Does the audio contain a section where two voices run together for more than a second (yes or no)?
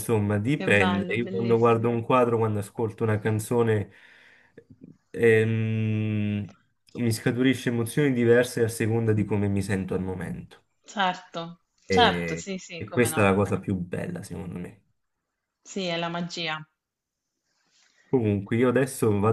yes